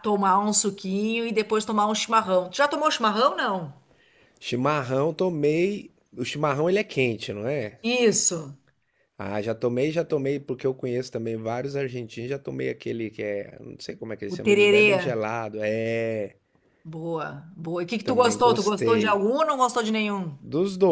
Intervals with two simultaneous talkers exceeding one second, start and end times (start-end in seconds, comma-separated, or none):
18.0-19.2